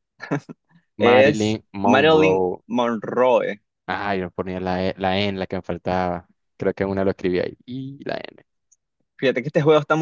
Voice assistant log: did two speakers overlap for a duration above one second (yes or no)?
yes